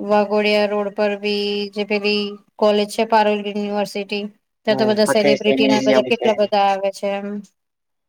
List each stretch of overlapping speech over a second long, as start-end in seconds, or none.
4.7-6.3